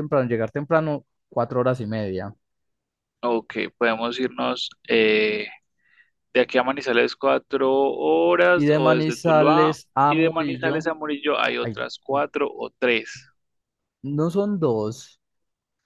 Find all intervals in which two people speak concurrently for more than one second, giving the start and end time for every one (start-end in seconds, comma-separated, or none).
8.5-10.9